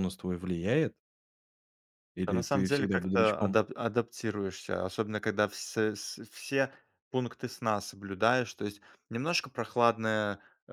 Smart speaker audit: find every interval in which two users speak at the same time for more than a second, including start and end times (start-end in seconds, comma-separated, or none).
2.3-3.6